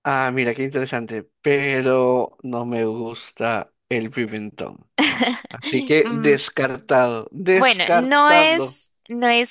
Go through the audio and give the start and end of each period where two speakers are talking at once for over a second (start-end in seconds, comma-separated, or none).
7.5-8.8